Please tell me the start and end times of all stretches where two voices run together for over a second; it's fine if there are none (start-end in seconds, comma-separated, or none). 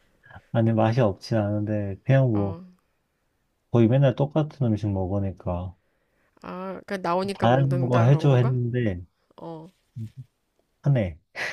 7.3-8.6